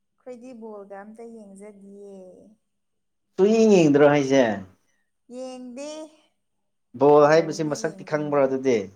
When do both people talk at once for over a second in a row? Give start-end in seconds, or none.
7.2-8.4